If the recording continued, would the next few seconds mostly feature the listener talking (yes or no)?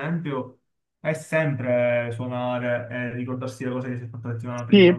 yes